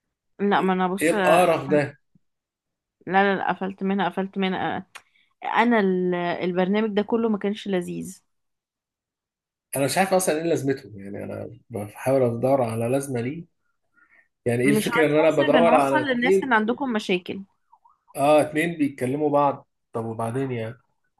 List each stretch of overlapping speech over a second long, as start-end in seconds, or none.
14.6-16.5